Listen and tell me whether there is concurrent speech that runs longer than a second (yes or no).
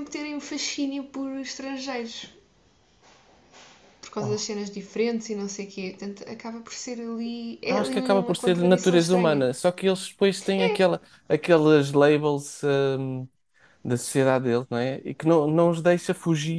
yes